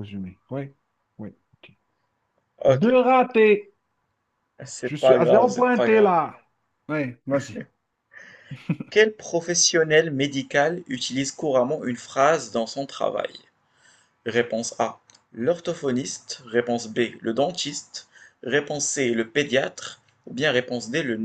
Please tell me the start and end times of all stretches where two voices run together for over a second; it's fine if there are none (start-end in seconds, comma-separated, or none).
4.8-6.1